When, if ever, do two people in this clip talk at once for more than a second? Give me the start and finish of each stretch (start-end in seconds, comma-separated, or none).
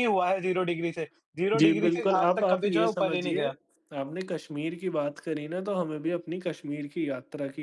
1.6-3.4